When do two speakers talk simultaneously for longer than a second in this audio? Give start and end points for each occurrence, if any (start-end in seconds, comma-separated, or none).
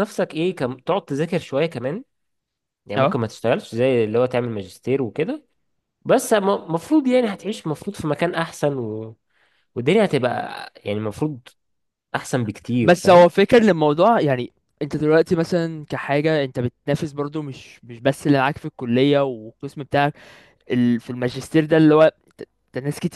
none